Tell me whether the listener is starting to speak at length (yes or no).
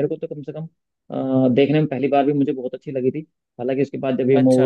no